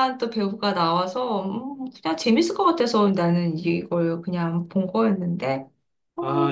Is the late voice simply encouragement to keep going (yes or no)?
no